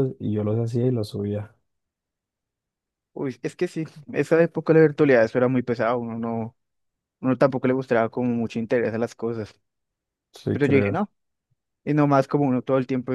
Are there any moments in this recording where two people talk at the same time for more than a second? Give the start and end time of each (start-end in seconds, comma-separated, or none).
none